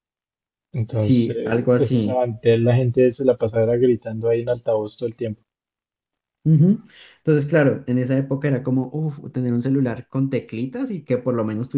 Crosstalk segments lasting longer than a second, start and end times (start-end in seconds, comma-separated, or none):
0.9-2.2